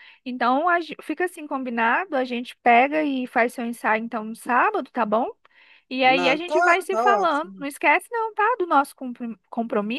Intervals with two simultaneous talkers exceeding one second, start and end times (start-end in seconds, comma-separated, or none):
6.0-7.7